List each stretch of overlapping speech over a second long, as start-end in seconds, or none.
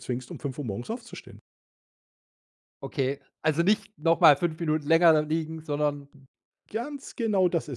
none